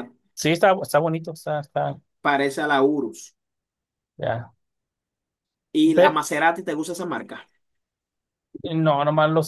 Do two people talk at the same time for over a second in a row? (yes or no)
no